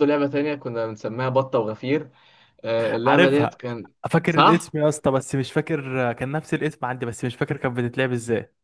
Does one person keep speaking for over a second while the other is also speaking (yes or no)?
no